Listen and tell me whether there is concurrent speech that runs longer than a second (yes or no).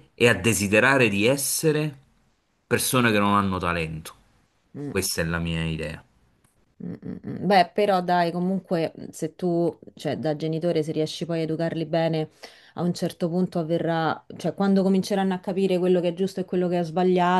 no